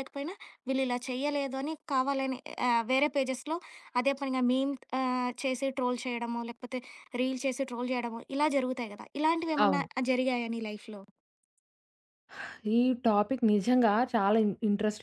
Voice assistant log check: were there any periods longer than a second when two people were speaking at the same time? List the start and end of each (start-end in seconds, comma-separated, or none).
none